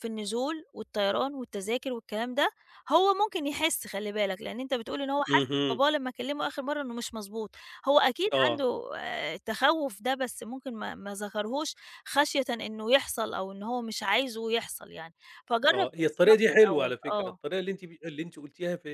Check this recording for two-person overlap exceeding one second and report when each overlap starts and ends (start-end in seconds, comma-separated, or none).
15.7-17.4